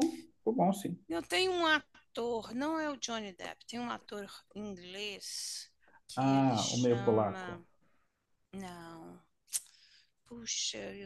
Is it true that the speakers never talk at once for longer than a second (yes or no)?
no